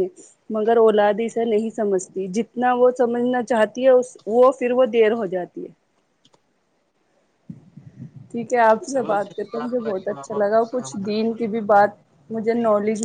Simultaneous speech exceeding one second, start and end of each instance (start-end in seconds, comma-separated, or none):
8.9-11.3